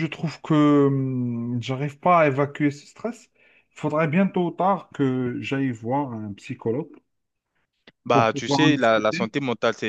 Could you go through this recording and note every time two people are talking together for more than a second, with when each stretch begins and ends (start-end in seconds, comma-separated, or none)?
8.1-9.3